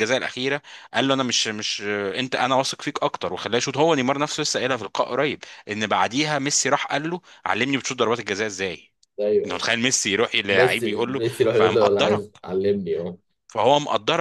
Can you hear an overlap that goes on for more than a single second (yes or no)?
yes